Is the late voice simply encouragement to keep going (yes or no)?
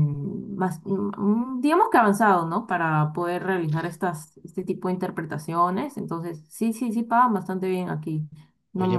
no